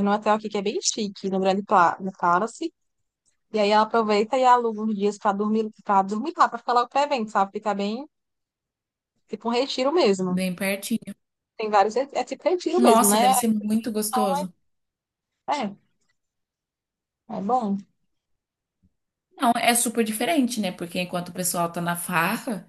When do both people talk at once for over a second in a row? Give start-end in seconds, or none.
none